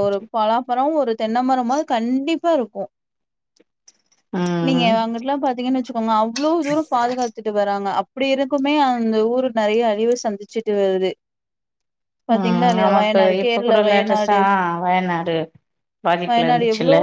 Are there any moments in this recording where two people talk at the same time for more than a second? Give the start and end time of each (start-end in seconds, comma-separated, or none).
12.3-14.4